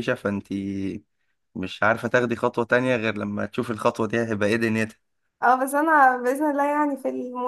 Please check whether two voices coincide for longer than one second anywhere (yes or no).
no